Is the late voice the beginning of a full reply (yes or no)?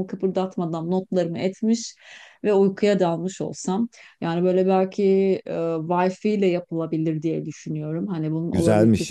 yes